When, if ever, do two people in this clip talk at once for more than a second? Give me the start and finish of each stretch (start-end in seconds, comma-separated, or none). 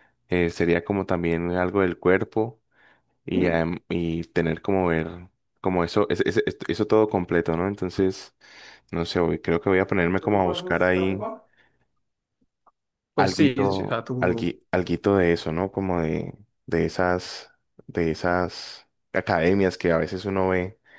13.2-14.5